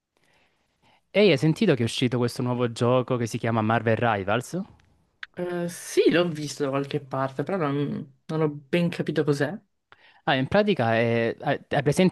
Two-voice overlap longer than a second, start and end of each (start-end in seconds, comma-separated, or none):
none